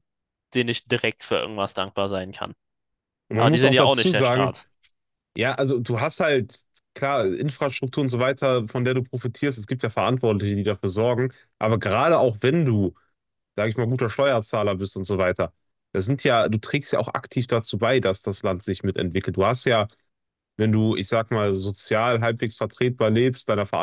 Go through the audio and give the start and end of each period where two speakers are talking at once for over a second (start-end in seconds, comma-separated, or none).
3.3-4.6